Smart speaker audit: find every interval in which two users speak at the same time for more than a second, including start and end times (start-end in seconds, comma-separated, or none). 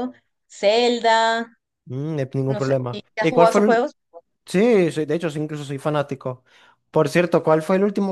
2.5-3.9